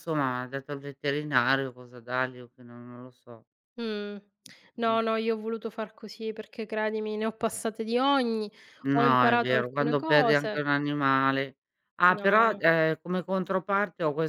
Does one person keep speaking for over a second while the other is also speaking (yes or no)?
yes